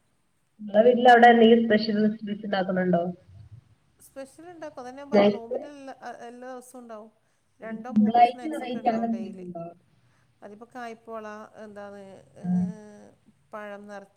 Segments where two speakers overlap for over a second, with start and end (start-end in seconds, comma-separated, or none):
7.7-9.4